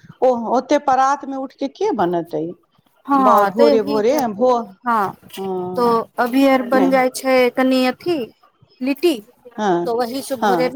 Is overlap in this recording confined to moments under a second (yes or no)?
yes